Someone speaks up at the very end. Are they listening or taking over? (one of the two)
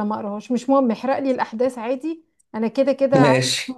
listening